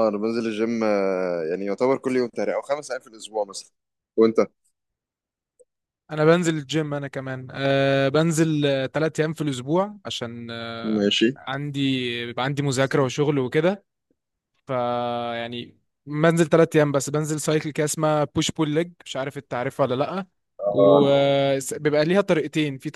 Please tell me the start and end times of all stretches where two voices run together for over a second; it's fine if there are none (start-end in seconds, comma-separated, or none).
none